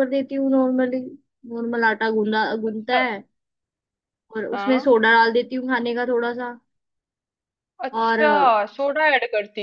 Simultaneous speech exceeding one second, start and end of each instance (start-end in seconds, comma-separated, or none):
none